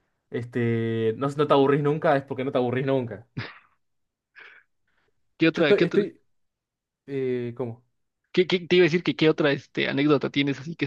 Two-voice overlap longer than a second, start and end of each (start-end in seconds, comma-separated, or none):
none